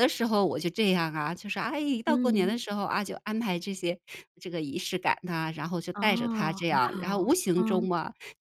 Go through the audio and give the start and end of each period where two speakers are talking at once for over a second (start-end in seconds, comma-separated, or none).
5.9-7.9